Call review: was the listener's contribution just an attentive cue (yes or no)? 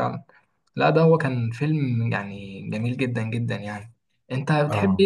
yes